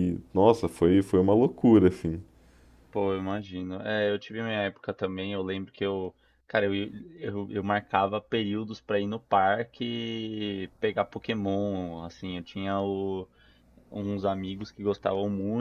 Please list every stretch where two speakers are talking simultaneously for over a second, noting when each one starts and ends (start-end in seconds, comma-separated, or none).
none